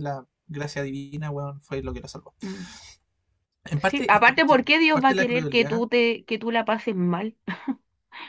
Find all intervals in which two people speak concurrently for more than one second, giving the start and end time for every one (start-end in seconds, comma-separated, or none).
3.8-5.8